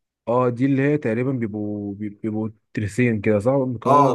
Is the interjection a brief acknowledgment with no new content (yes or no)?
no